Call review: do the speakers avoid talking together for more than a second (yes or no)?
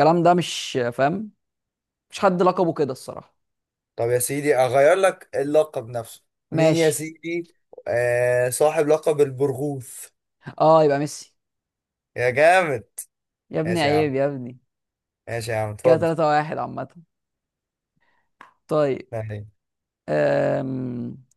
yes